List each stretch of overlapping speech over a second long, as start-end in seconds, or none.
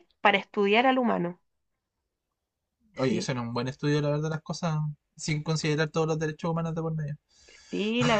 none